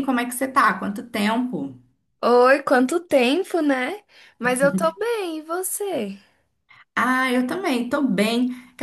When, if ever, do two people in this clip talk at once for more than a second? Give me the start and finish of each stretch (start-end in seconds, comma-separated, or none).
none